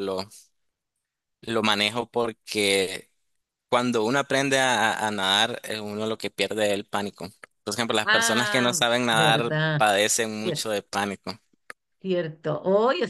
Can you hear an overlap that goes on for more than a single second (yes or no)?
yes